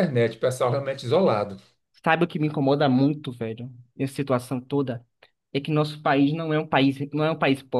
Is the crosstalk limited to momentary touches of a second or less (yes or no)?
yes